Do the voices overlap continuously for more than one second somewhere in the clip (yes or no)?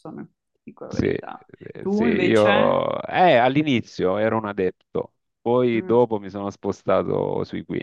yes